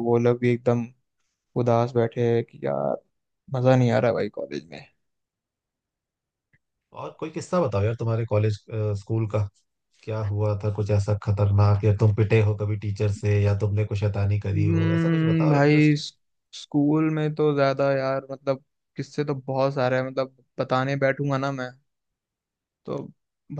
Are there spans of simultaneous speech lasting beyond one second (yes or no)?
yes